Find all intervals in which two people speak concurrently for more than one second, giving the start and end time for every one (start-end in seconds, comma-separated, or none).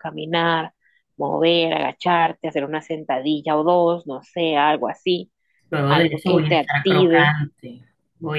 5.9-7.3